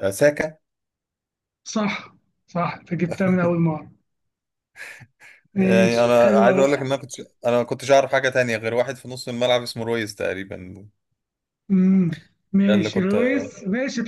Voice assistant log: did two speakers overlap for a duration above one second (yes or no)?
yes